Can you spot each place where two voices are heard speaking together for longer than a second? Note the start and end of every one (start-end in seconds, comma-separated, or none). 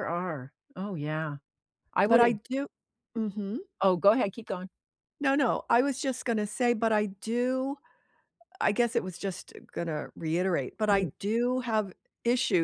none